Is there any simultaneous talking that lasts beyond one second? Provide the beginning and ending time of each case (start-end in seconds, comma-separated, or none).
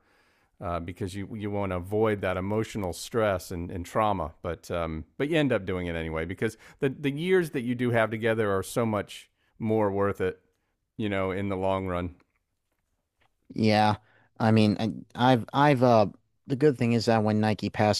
none